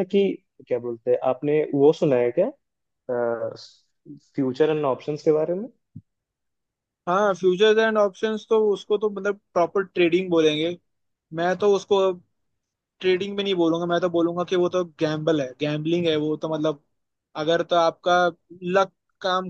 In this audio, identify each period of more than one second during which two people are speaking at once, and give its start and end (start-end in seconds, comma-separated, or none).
none